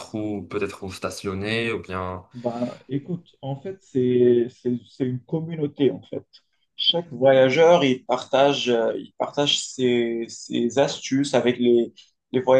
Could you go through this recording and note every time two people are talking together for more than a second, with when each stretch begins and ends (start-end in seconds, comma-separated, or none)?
none